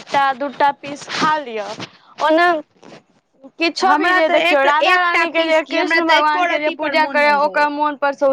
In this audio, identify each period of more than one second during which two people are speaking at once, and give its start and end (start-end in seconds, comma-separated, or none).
3.9-7.7